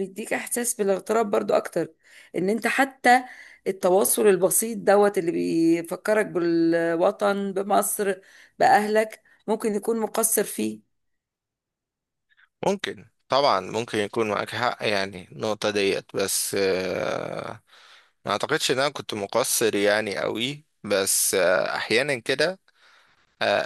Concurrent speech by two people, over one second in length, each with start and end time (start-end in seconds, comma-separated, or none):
none